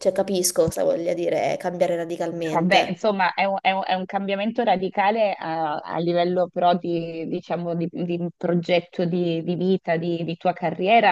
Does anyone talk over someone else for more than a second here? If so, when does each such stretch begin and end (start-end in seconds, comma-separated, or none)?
none